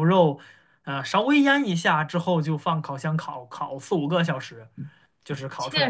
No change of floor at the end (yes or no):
no